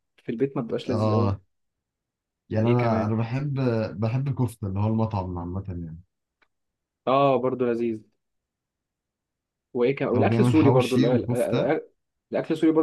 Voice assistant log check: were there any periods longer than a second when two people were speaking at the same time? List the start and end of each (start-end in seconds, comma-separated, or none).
10.2-11.7